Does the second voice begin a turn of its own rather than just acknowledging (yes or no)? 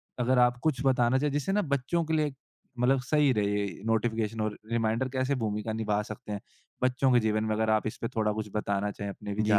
yes